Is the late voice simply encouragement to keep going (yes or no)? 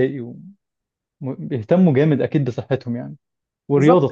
no